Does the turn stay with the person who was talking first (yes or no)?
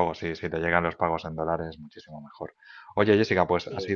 yes